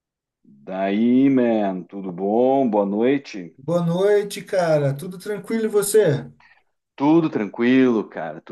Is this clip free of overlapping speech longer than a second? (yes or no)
yes